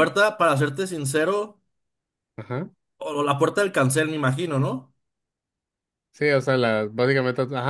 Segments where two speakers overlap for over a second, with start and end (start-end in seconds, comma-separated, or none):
none